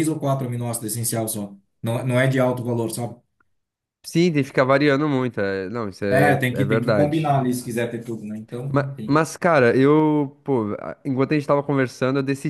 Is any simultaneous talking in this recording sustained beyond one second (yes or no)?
yes